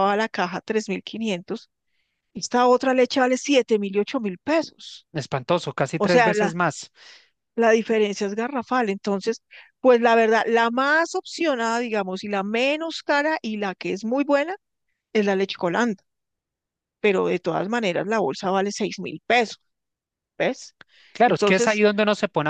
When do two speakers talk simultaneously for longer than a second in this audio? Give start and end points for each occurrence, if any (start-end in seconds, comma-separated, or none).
none